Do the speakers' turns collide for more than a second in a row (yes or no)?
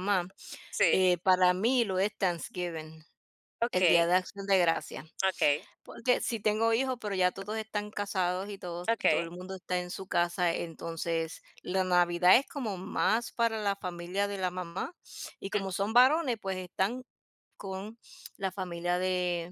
no